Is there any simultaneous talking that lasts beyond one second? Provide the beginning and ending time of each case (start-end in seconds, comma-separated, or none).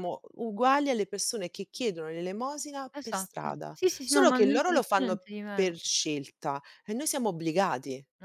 2.9-5.7